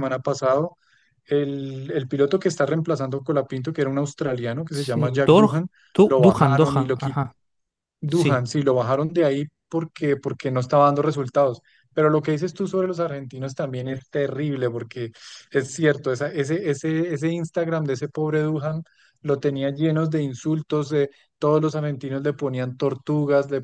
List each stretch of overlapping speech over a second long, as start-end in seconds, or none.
4.7-7.2